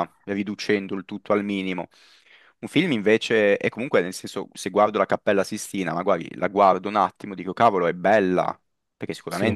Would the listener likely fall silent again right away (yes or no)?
yes